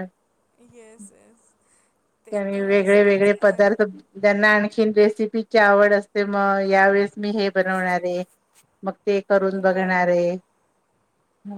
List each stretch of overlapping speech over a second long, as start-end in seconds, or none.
2.3-3.7